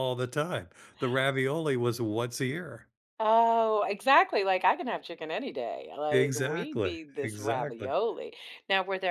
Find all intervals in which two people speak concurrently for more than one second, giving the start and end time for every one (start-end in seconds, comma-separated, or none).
6.1-7.9